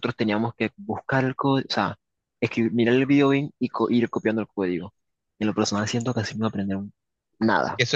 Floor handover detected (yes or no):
yes